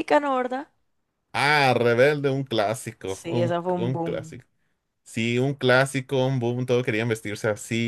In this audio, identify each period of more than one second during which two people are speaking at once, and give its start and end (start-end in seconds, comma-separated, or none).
3.0-4.3